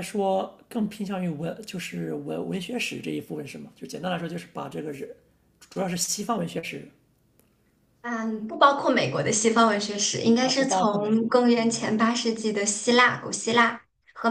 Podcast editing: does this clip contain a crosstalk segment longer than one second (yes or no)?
yes